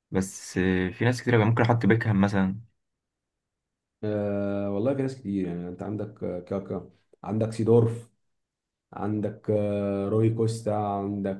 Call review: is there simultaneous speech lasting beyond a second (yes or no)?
no